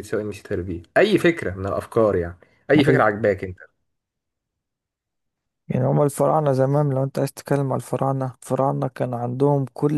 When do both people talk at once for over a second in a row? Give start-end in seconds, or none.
none